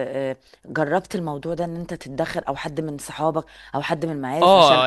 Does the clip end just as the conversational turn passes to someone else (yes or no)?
yes